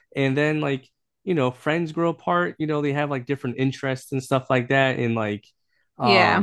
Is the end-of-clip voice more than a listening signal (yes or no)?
no